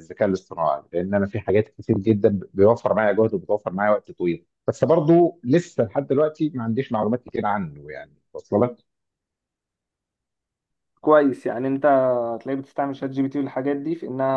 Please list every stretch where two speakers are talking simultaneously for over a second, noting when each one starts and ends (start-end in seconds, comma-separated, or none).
none